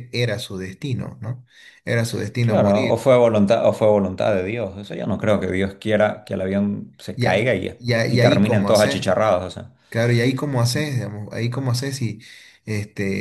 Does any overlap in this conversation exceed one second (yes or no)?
yes